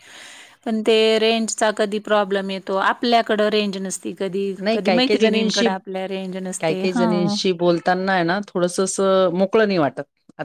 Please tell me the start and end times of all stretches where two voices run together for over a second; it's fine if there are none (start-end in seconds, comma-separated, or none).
none